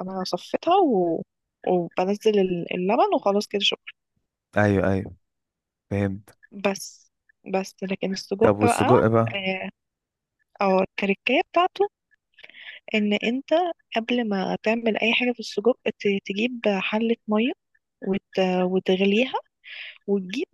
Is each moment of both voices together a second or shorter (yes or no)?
yes